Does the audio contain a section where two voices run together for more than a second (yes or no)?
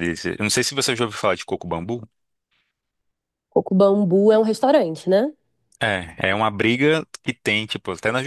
no